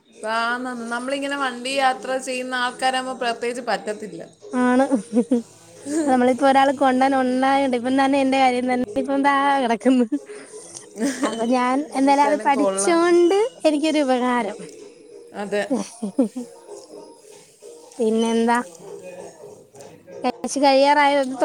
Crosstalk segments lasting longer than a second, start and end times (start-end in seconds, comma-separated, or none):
11.3-13.0